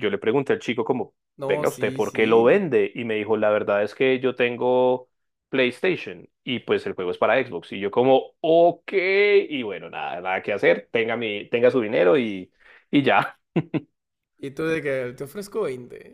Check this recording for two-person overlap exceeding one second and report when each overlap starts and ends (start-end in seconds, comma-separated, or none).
1.4-2.6